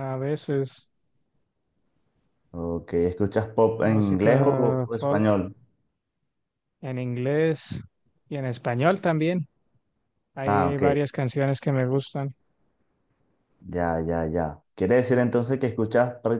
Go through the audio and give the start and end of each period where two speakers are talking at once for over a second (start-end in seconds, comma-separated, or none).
3.8-5.3